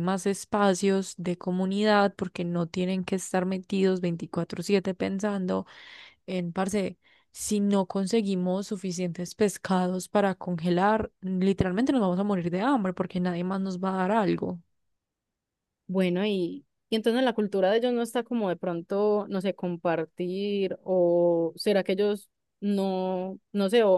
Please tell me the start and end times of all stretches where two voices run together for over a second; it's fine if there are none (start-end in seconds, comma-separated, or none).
none